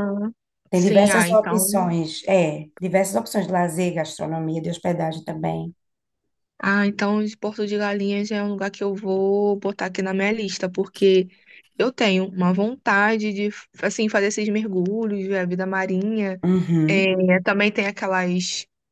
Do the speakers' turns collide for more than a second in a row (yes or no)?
yes